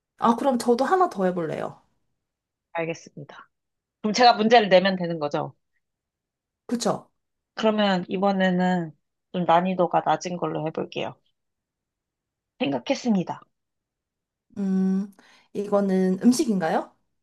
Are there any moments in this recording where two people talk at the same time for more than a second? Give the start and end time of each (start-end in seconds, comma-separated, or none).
none